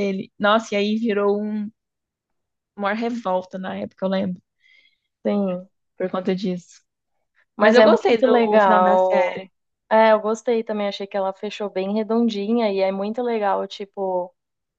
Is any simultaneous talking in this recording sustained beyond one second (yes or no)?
yes